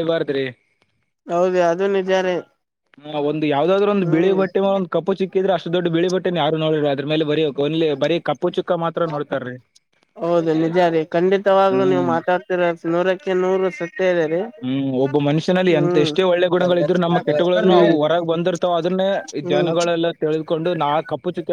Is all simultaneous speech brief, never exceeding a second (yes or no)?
yes